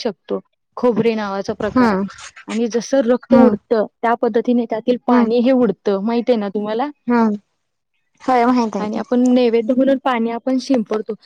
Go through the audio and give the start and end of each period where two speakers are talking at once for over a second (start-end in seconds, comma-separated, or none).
none